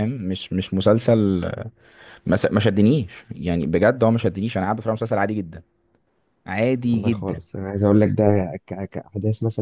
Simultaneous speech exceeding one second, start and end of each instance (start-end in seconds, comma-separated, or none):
none